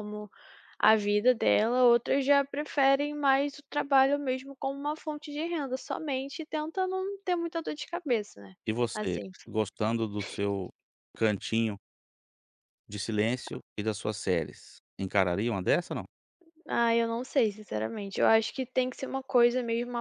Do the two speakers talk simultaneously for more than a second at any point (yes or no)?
no